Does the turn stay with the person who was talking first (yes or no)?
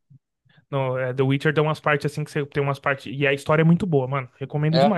yes